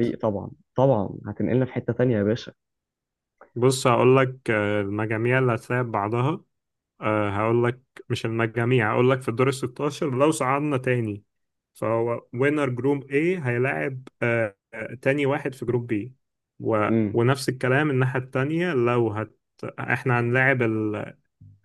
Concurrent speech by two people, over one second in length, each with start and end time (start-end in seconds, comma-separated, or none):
none